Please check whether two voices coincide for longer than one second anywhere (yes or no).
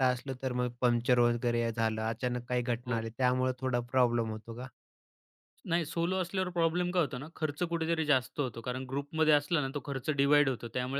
no